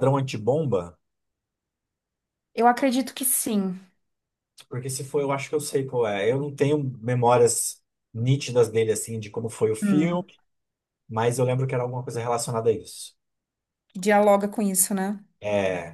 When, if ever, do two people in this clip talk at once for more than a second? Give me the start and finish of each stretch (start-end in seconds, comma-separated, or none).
none